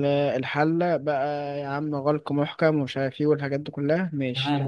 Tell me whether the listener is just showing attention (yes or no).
no